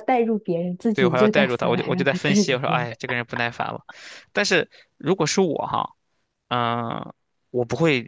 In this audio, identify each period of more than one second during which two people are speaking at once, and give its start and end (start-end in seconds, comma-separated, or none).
0.9-2.9